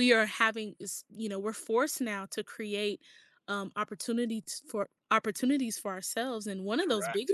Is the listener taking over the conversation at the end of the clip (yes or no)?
no